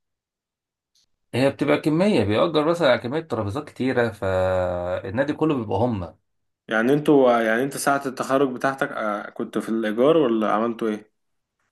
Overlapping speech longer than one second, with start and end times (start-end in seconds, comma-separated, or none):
none